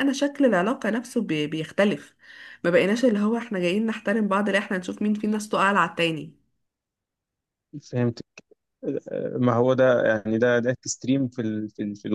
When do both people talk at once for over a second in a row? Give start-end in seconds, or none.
none